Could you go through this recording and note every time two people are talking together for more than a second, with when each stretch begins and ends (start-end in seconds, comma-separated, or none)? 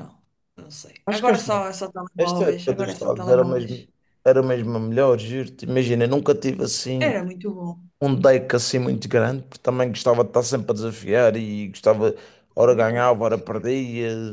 2.2-3.9